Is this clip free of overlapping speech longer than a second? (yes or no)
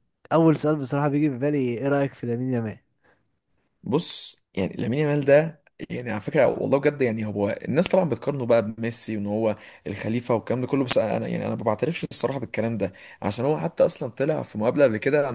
yes